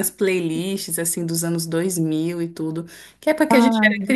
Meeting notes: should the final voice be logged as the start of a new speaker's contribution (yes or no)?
no